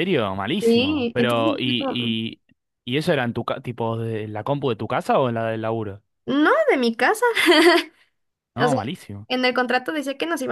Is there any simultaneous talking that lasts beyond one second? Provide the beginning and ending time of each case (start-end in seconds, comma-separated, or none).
0.6-2.1